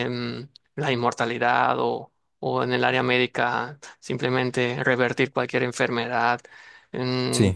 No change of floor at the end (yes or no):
yes